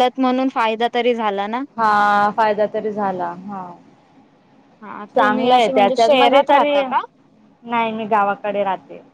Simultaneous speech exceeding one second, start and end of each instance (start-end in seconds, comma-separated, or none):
5.2-6.7